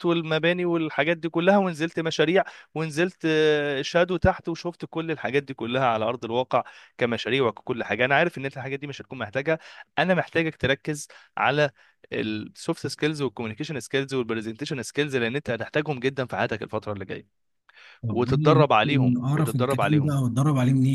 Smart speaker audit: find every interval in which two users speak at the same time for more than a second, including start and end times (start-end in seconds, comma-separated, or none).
18.1-20.2